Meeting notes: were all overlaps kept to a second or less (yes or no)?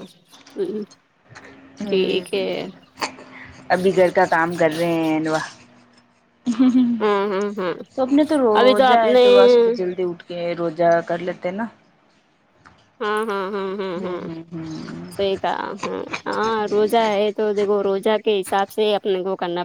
yes